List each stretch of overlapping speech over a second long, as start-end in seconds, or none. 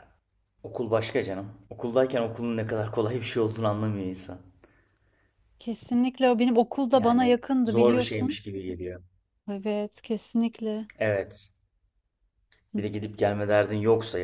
6.9-8.4